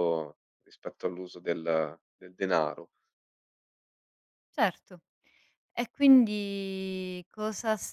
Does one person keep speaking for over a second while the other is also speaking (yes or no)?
no